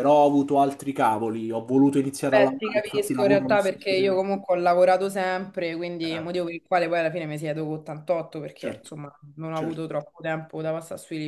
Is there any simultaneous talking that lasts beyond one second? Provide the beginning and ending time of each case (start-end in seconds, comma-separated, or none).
2.2-4.2